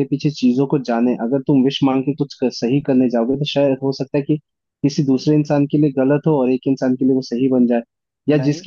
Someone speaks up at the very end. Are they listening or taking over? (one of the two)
listening